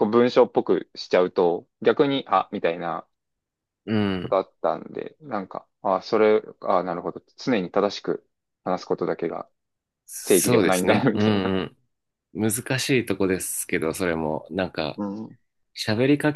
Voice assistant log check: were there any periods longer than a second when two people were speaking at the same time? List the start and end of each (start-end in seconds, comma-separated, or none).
10.2-11.5